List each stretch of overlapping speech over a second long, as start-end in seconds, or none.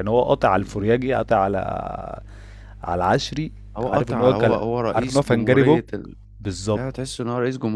3.8-5.8